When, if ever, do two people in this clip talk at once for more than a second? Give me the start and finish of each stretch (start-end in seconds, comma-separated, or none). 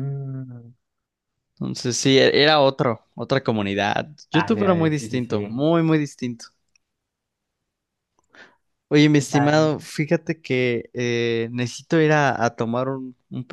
4.3-5.5